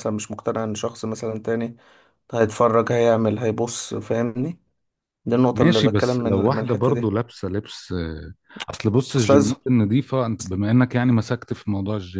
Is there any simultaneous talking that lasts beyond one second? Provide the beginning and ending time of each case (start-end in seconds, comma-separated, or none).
5.5-7.1